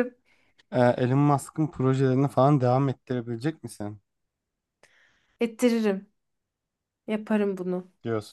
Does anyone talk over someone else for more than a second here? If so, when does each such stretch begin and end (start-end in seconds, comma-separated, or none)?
none